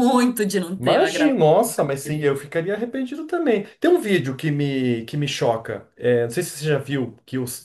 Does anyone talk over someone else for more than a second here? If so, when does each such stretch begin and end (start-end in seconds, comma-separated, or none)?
0.8-2.3